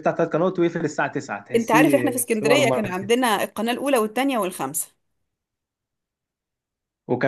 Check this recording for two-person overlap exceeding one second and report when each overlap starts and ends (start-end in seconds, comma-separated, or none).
1.6-3.1